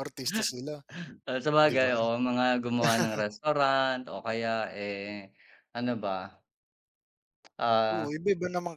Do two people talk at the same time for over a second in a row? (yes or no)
no